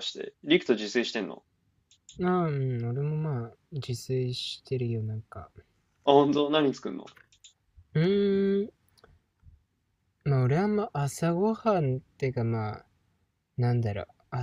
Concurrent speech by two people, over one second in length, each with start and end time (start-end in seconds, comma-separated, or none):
none